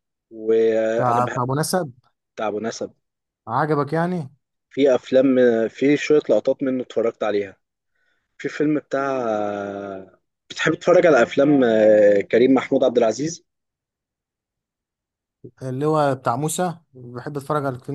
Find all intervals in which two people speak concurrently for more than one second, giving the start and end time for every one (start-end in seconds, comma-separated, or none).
none